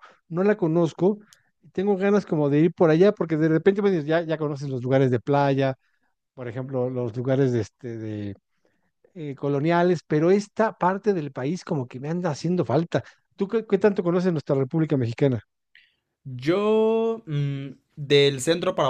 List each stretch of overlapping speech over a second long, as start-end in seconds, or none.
none